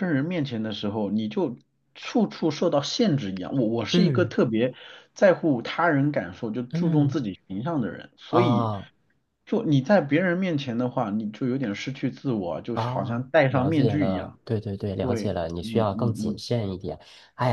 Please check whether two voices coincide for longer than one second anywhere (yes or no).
yes